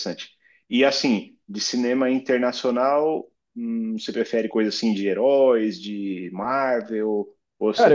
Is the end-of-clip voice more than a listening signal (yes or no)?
yes